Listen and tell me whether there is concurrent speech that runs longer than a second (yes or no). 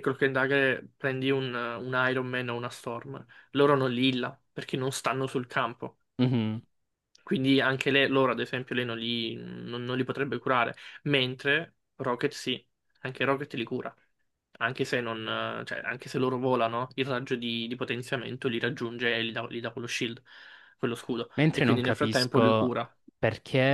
yes